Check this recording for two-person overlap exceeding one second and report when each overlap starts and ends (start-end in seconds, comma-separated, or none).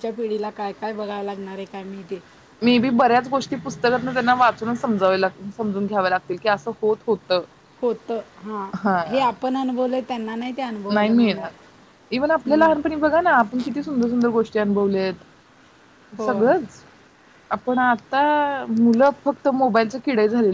none